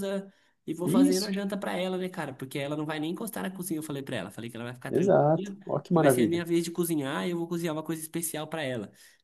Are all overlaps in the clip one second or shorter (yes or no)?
no